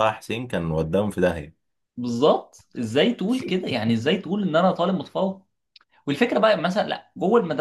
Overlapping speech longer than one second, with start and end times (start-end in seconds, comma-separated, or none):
none